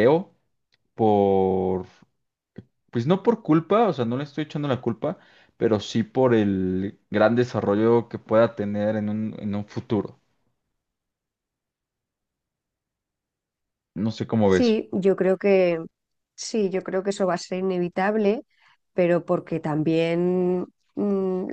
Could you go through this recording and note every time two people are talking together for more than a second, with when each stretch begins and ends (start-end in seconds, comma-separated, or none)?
none